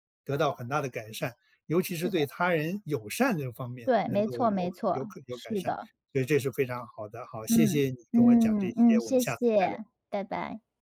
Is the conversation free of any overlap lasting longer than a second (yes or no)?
no